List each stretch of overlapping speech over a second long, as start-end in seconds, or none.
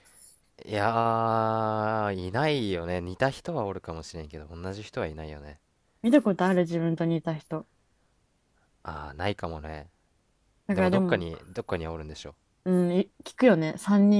none